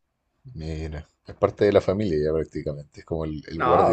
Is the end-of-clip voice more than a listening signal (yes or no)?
yes